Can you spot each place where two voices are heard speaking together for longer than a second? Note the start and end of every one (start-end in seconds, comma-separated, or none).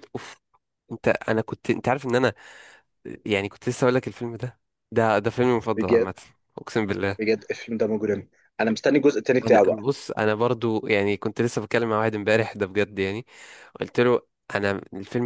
none